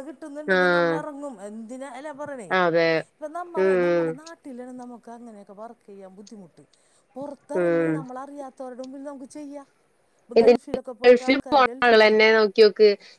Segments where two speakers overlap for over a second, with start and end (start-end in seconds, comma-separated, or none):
none